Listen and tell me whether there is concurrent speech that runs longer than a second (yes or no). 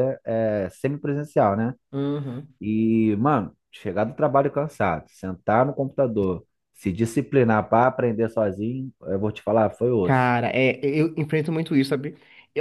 no